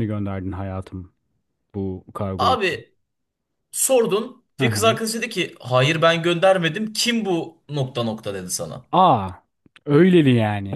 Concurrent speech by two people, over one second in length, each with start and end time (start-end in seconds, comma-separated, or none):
none